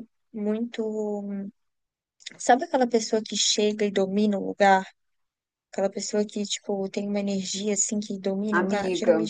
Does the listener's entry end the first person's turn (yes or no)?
yes